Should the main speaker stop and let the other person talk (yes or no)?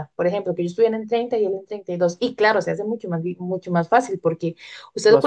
no